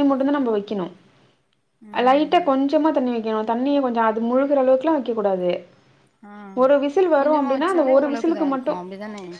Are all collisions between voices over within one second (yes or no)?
no